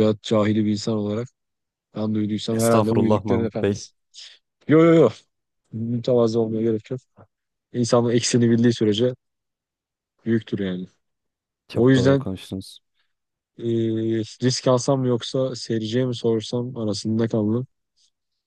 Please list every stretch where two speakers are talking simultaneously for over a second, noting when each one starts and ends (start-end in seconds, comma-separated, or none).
2.5-3.9